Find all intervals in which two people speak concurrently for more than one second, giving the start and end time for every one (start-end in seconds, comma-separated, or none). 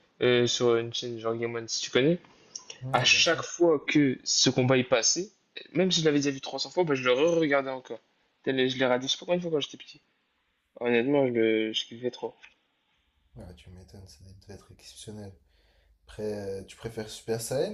none